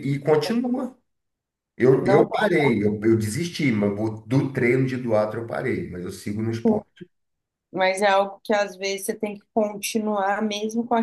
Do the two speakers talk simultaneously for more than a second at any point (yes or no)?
no